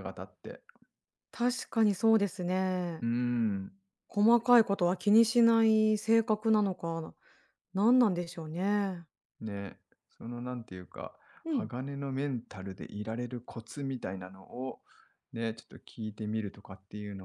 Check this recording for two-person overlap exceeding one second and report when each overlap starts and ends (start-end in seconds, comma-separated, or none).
none